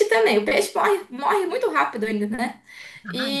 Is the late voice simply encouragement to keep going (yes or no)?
yes